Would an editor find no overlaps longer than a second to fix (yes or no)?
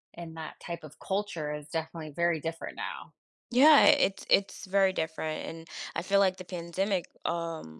yes